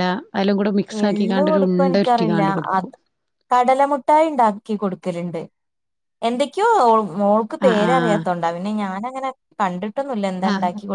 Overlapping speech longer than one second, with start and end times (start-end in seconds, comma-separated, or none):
1.1-2.9